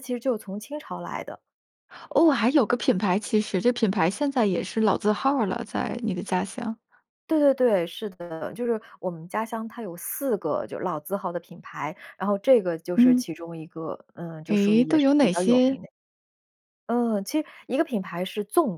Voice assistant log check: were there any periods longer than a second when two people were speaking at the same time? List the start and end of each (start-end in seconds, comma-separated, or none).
14.5-15.8